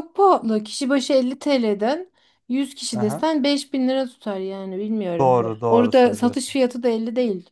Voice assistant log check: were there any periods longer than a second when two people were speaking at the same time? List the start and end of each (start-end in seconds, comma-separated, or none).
5.2-6.6